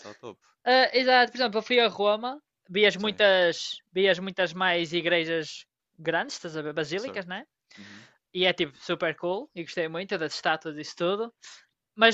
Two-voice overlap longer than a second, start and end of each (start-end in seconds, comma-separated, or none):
none